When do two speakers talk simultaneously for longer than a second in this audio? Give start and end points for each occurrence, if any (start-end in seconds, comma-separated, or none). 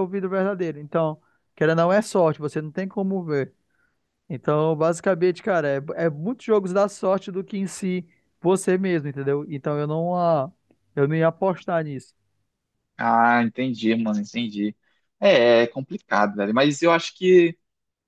none